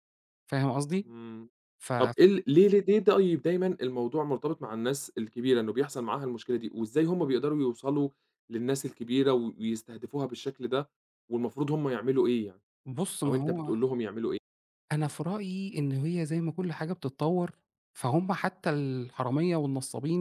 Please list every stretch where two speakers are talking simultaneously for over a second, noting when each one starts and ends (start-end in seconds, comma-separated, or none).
none